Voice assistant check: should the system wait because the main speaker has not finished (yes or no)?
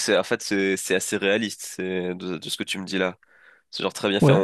yes